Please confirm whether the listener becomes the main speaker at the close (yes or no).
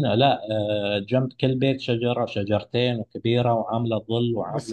yes